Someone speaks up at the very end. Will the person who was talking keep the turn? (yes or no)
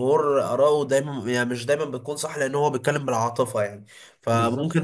yes